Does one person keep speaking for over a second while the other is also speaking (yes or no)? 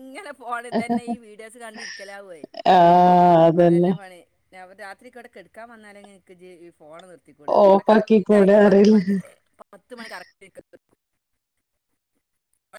yes